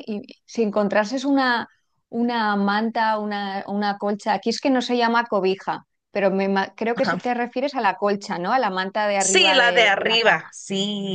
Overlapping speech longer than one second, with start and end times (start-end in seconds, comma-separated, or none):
9.2-10.5